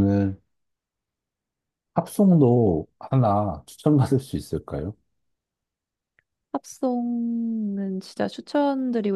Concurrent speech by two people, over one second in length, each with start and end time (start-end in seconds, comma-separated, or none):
none